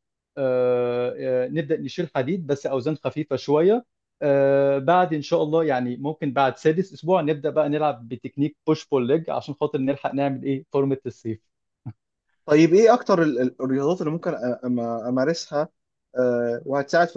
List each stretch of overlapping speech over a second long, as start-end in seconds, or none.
none